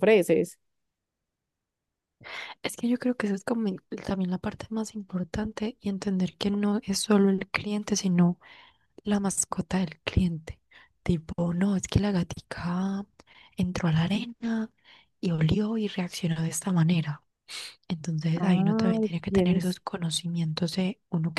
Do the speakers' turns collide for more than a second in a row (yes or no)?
yes